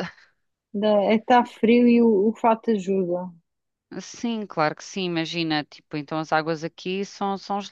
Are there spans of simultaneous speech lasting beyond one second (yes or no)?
no